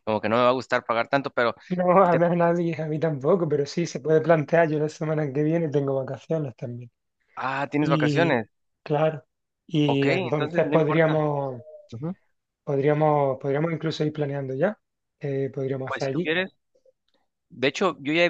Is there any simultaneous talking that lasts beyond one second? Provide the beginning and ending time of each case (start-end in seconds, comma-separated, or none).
9.8-11.2